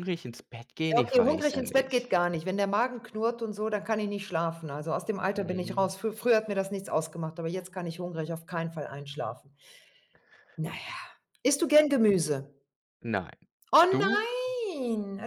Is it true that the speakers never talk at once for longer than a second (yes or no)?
no